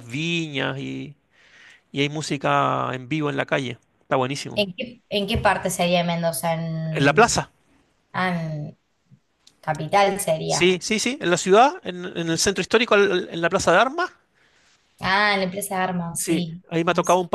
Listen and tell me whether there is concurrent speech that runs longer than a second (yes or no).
no